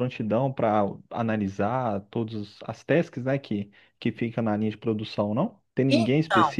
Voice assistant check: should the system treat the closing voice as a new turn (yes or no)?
no